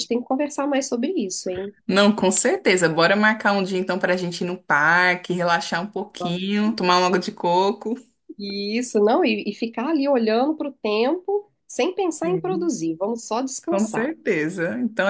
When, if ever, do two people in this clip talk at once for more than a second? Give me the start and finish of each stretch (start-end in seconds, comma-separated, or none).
none